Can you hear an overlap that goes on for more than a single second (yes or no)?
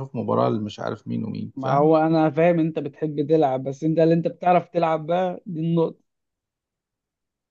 no